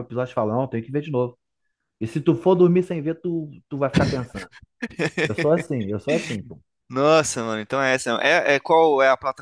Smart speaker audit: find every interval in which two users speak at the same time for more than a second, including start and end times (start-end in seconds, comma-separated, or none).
none